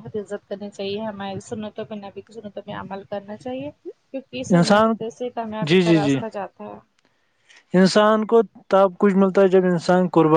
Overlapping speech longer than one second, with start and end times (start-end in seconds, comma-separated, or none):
none